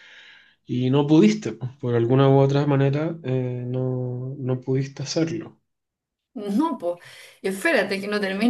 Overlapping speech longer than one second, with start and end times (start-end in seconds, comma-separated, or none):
none